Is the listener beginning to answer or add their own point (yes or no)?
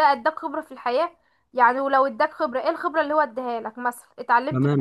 yes